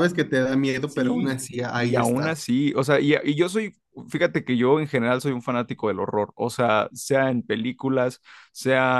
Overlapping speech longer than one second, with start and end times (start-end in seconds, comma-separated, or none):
0.8-2.4